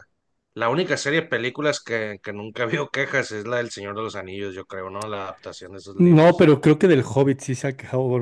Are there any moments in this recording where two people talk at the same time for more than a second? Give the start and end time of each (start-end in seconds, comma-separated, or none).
none